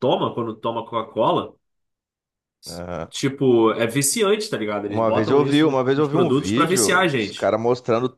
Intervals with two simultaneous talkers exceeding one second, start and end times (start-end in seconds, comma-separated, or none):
4.9-7.5